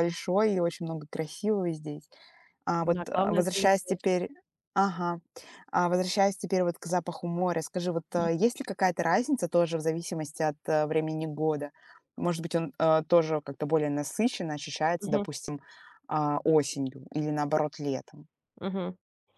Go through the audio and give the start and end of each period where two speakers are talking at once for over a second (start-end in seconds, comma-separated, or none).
2.8-4.0